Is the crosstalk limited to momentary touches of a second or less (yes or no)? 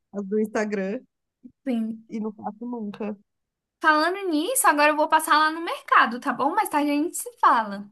yes